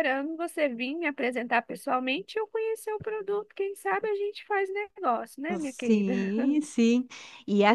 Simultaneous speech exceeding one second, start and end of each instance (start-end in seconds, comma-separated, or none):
none